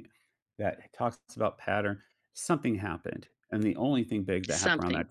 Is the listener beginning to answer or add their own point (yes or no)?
no